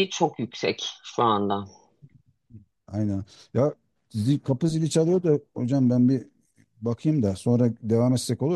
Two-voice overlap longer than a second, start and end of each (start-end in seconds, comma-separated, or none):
none